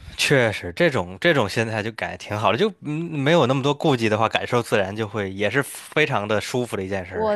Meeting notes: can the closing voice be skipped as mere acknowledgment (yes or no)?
no